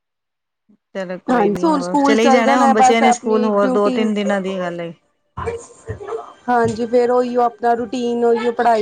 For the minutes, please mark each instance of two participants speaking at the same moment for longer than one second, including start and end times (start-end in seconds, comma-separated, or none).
1.3-4.0